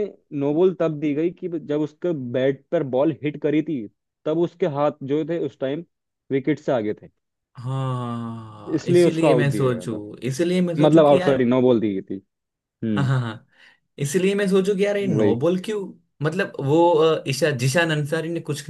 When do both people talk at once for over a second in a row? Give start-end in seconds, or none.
8.8-10.0